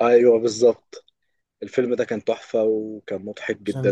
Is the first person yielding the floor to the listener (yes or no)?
yes